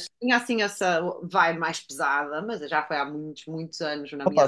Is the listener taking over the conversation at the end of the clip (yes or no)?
yes